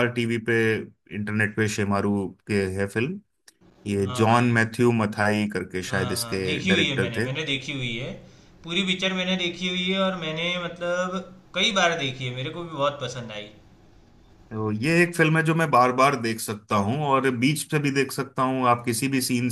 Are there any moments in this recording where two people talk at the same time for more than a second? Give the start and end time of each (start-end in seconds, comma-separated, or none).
5.9-7.3